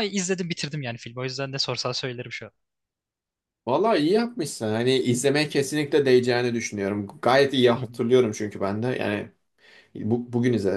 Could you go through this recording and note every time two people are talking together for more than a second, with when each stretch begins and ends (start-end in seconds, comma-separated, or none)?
none